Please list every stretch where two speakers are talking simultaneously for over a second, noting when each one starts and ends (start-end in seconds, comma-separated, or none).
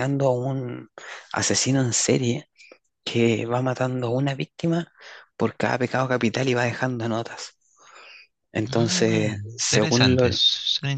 8.7-10.4